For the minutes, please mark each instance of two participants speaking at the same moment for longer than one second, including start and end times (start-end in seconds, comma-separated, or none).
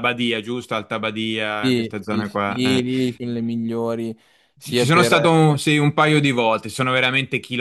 1.6-2.8